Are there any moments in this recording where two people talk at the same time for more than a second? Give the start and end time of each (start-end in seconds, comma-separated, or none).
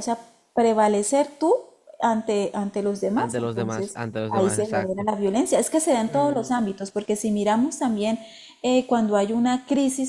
3.1-5.1